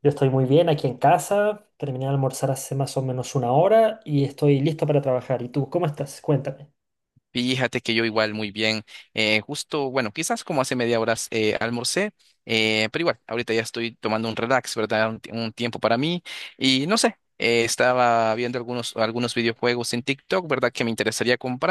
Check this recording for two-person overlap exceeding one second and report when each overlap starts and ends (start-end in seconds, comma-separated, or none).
none